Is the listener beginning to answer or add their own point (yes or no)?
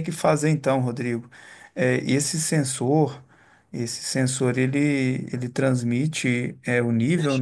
no